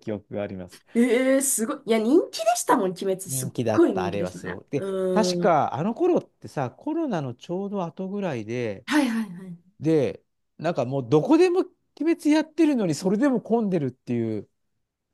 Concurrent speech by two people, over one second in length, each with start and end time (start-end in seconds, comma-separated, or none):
3.3-5.6